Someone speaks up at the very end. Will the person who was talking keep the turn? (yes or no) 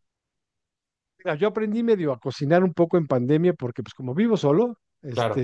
yes